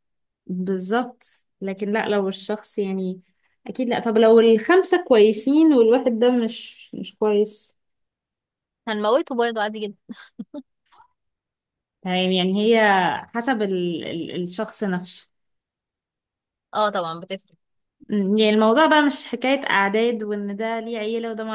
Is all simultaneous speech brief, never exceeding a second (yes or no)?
yes